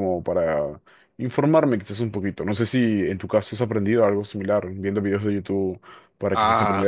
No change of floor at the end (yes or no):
yes